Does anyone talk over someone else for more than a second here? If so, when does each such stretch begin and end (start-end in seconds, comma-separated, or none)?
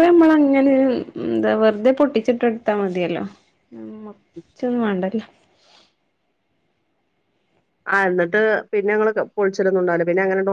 none